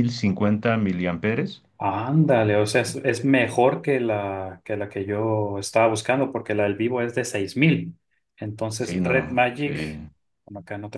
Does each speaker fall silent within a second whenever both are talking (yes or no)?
no